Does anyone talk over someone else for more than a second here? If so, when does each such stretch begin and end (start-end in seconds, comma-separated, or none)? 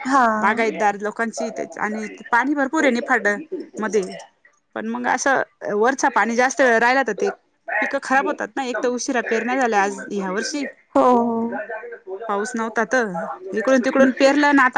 none